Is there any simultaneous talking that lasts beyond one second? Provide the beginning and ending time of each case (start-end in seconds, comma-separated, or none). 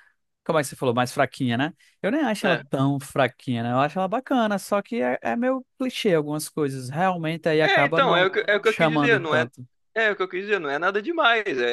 7.6-9.5